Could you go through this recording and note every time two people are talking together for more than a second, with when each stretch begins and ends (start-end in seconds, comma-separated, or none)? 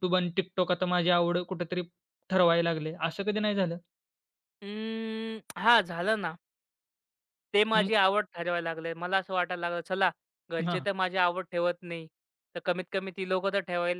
none